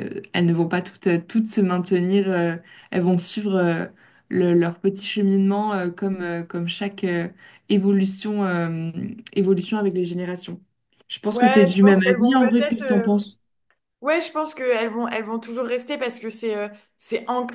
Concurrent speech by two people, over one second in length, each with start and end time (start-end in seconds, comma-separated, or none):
11.3-13.1